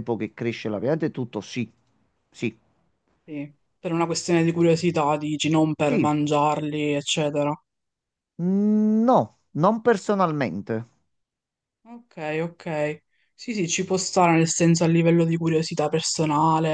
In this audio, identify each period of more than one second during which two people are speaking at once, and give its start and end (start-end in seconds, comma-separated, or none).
none